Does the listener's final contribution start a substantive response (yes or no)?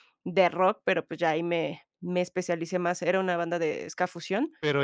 yes